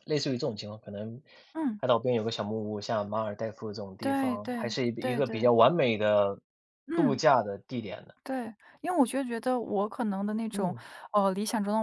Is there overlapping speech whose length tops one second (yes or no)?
yes